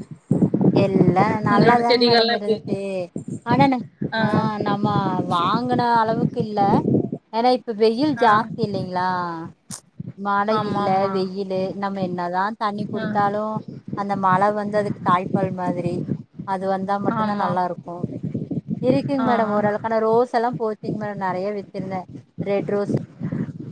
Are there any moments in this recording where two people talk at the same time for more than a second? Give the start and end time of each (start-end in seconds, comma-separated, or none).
1.5-2.8